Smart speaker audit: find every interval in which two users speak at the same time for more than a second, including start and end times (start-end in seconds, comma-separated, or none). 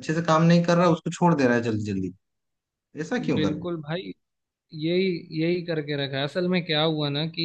none